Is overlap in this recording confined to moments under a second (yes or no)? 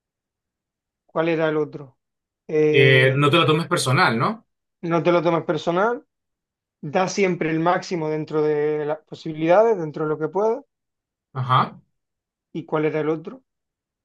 yes